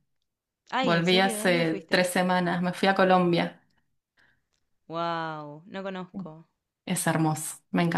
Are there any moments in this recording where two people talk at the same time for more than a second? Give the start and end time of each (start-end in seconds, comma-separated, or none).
0.8-2.0